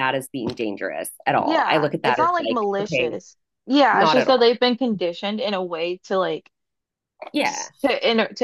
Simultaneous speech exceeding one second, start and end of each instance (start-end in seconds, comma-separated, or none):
1.4-3.2